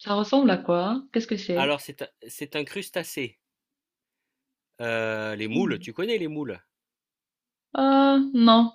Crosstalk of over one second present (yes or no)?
no